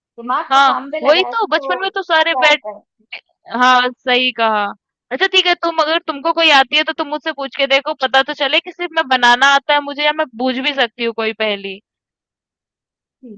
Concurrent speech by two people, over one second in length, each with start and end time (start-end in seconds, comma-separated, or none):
0.5-2.6